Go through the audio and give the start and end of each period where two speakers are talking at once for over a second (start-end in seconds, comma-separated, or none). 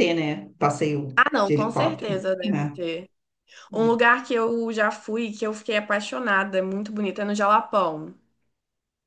1.2-2.8